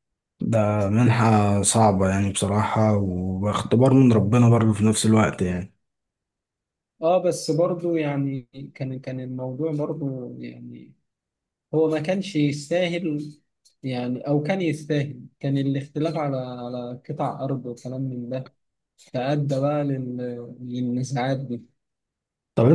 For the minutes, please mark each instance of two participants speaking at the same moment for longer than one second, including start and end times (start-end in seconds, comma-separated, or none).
none